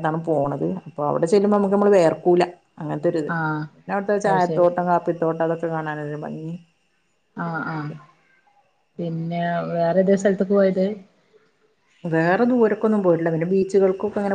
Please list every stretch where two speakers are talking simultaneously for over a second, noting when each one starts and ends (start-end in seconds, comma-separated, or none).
none